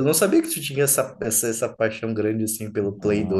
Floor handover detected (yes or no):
yes